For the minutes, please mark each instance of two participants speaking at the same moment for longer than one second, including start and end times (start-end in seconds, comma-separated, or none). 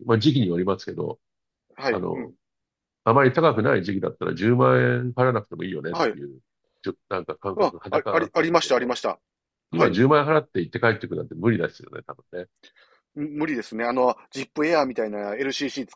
7.5-8.9